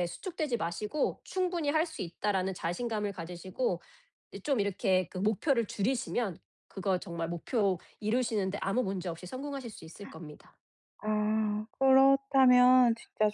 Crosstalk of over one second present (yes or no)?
no